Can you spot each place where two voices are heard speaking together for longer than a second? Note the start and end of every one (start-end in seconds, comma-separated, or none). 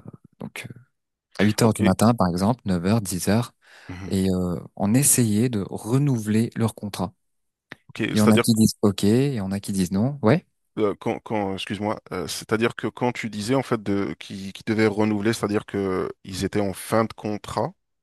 none